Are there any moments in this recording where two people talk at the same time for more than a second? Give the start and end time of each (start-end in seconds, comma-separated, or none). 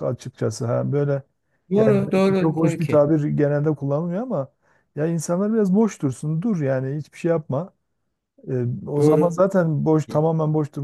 1.8-3.1